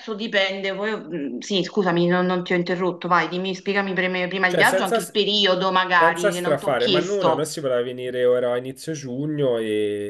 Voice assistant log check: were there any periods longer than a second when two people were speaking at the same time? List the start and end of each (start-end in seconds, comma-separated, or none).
6.0-7.5